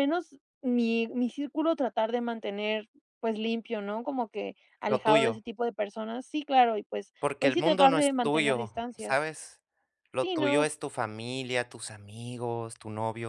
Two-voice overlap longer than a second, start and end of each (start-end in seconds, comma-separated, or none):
7.2-9.3